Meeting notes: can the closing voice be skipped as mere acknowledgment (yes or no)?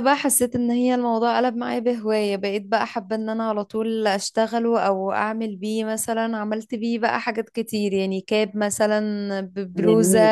yes